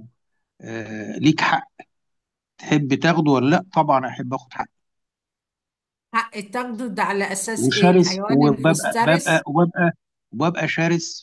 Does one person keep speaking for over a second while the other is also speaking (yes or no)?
yes